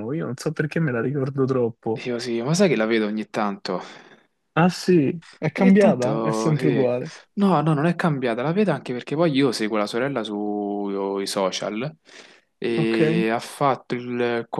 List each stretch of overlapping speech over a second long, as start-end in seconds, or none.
5.5-6.9